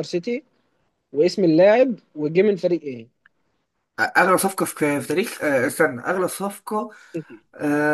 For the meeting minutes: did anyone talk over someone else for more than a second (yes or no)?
no